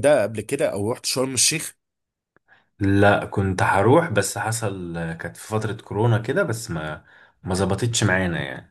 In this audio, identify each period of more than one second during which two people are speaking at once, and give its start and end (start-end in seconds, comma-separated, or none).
none